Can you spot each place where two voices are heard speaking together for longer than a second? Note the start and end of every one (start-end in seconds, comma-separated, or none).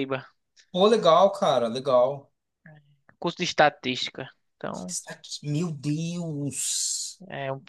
none